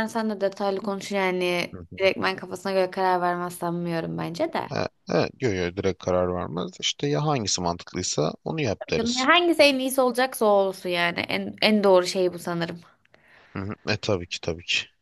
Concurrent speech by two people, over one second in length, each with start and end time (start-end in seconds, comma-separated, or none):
none